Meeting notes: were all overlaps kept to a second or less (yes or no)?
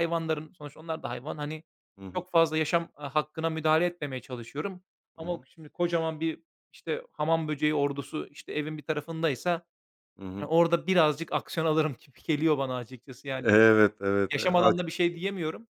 yes